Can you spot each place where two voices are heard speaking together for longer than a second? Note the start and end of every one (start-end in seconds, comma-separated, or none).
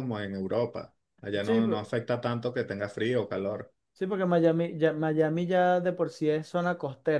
none